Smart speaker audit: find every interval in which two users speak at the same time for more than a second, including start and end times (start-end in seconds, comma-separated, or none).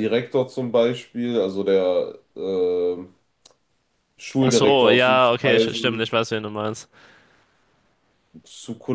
4.4-6.1